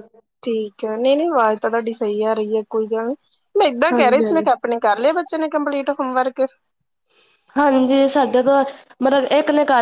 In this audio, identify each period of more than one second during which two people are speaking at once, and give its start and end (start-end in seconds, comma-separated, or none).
none